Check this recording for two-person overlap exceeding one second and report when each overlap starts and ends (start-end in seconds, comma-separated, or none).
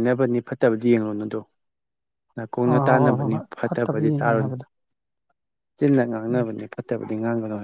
2.7-4.5